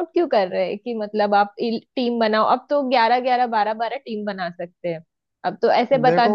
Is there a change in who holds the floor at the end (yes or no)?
no